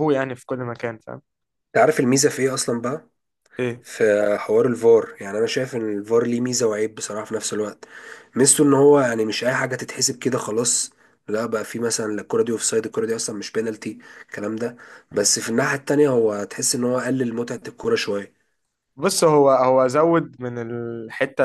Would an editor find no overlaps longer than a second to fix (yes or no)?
yes